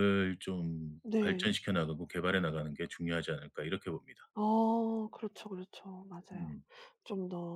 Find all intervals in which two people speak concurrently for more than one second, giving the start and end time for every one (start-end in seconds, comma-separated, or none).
none